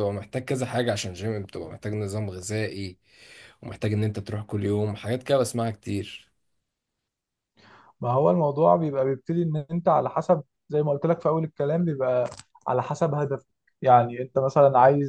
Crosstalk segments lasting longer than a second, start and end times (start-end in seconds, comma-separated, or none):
none